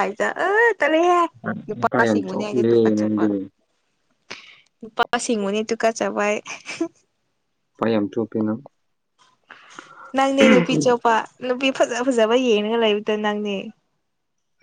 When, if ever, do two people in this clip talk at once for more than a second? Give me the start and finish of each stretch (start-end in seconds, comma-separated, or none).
1.8-3.2